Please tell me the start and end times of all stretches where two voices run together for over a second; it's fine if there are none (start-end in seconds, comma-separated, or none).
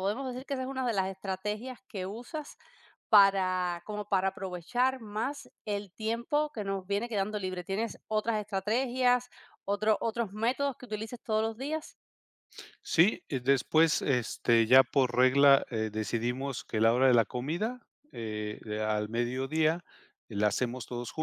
none